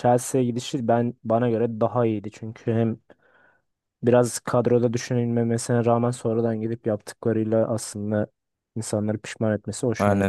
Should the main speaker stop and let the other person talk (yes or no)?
yes